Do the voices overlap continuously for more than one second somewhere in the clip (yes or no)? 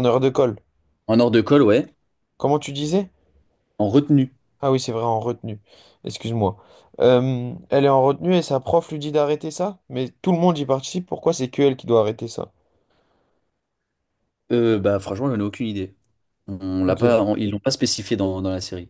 no